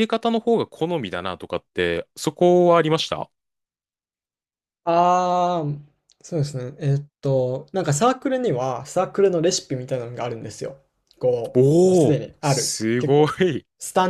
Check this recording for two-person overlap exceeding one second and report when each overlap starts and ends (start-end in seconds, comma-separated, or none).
11.5-13.3